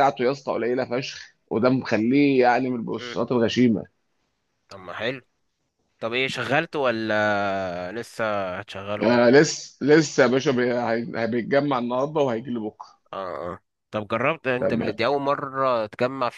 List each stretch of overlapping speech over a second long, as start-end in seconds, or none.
none